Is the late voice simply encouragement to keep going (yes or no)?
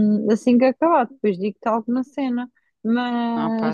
yes